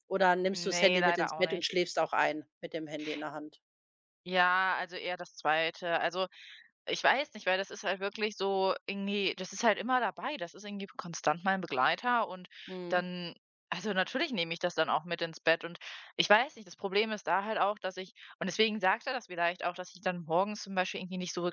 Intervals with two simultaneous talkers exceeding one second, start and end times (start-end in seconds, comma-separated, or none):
0.5-1.7